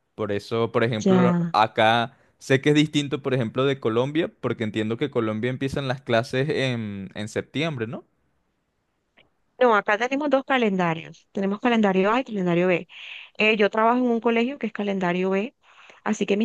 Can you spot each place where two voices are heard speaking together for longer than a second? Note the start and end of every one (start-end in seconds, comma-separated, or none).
none